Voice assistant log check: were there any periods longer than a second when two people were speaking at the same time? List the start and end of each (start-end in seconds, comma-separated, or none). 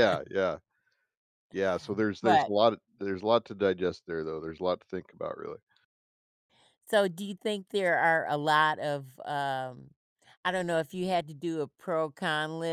none